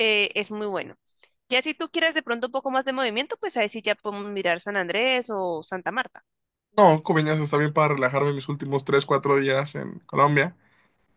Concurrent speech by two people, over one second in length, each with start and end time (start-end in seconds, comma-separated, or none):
none